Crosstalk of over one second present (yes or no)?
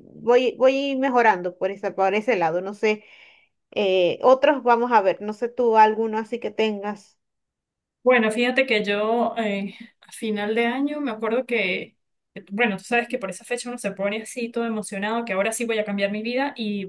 no